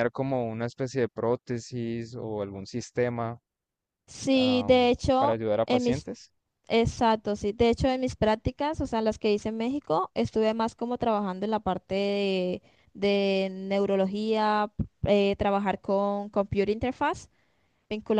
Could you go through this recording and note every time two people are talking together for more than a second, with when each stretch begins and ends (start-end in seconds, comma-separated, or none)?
4.3-6.1